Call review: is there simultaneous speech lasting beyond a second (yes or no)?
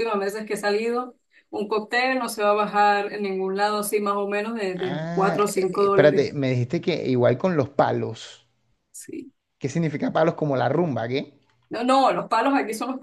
yes